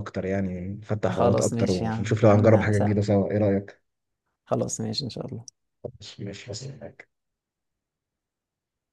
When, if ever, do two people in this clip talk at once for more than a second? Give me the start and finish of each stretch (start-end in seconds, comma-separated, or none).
1.1-3.1